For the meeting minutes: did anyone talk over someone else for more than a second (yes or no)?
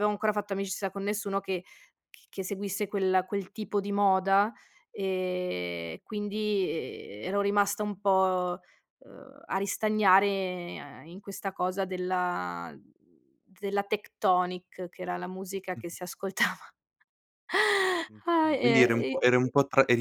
yes